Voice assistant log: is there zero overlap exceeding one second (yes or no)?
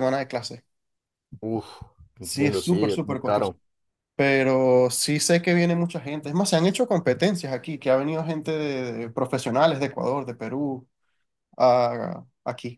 no